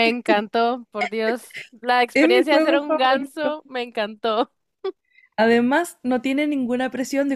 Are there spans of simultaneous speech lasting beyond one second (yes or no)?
yes